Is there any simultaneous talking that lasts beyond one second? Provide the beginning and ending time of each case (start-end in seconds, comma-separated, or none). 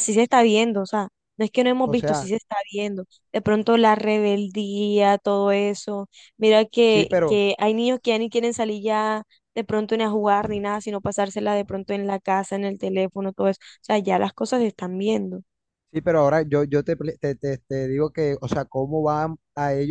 none